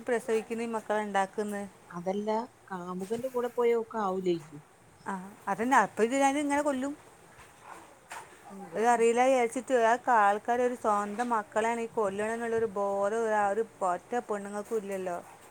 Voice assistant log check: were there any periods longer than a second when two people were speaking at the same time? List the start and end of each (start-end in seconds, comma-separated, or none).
none